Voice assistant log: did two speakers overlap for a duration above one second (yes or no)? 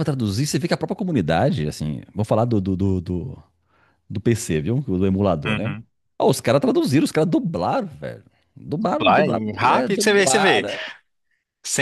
yes